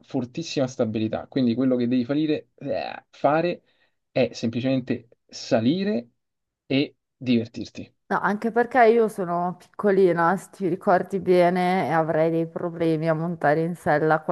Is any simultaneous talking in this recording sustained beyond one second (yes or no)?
no